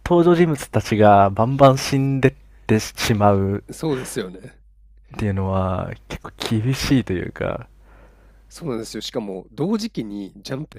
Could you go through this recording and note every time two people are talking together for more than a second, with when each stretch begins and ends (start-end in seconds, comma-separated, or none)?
none